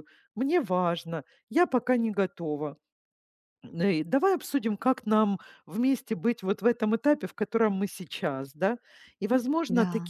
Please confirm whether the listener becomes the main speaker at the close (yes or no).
no